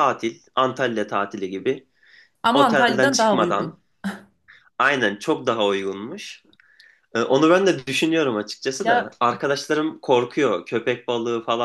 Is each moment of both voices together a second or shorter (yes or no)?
no